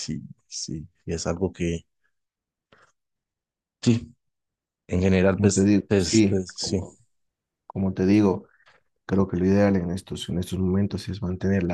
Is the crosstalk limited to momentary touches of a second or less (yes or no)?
no